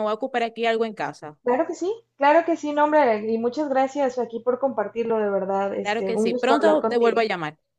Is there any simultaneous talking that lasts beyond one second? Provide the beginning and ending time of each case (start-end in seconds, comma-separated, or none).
5.8-7.2